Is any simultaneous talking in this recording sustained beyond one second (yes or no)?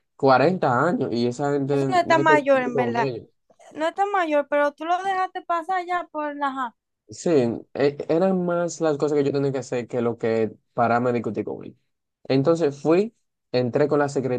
yes